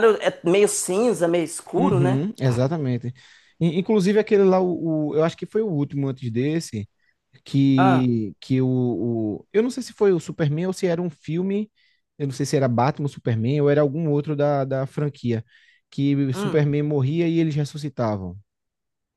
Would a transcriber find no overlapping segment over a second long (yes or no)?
yes